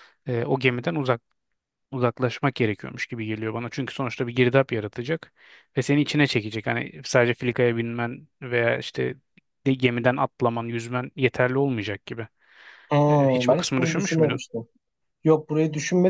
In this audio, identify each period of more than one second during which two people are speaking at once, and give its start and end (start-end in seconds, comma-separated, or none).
13.1-14.4